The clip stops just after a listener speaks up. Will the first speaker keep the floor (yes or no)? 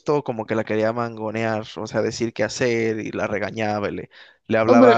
no